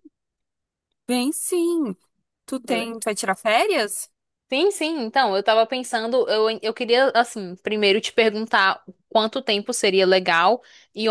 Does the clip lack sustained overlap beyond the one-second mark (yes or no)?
yes